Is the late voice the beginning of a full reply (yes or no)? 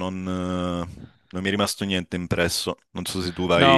yes